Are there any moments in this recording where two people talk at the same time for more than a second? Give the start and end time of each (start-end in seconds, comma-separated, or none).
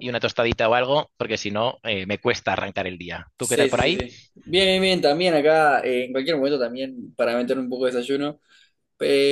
none